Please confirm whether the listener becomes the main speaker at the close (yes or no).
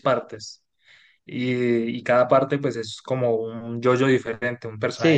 yes